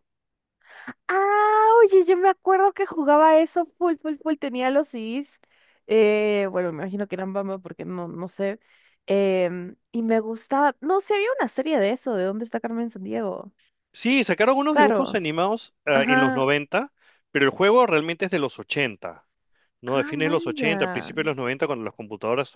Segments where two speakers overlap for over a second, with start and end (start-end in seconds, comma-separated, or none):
19.9-21.1